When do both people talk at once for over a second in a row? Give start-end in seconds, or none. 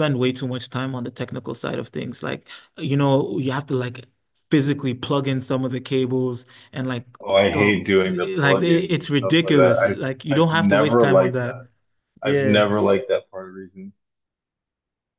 7.5-11.6